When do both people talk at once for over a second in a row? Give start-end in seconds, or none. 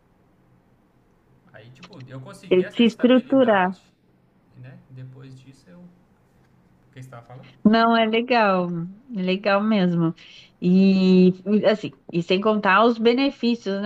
2.5-3.7